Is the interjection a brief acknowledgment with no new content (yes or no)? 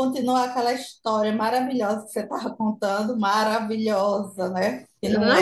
no